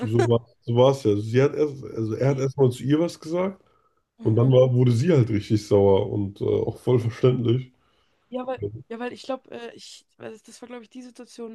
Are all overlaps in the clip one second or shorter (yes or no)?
yes